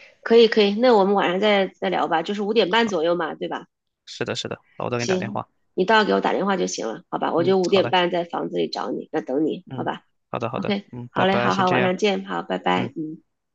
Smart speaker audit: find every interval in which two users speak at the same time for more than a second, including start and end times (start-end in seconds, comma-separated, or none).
10.5-11.9